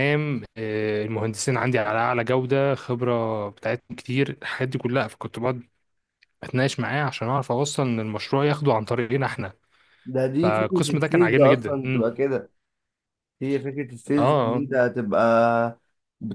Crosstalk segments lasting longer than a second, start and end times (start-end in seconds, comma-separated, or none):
10.4-12.1